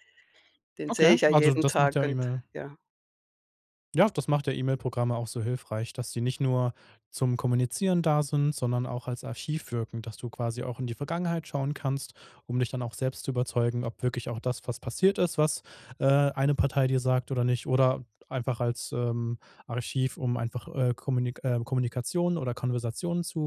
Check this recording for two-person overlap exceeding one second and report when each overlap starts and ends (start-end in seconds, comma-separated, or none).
0.9-2.4